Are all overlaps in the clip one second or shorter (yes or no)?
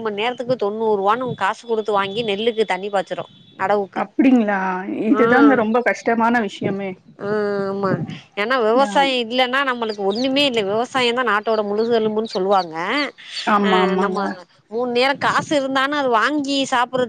yes